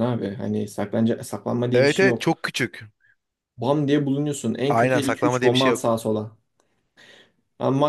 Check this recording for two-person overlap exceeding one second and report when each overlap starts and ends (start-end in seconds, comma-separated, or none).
4.7-5.9